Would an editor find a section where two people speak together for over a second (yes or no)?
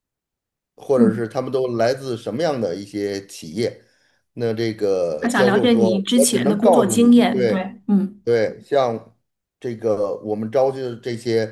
yes